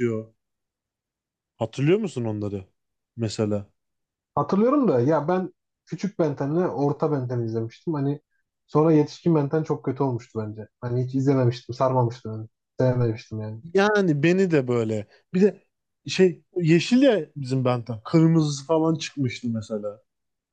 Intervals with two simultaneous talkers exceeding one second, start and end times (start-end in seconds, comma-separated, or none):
none